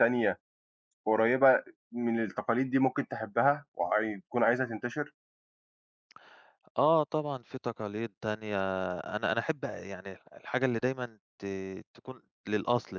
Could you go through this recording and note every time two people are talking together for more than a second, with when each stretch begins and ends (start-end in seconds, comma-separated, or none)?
none